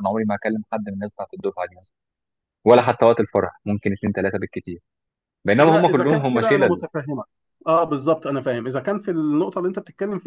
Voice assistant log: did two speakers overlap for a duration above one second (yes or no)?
yes